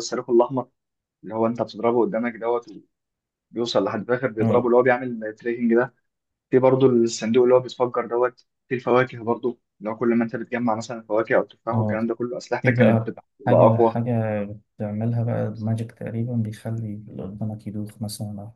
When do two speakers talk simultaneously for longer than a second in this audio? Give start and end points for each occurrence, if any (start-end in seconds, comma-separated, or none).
12.6-14.0